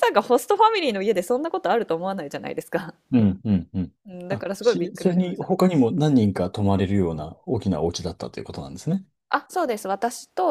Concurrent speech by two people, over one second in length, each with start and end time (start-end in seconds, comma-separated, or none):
4.3-5.5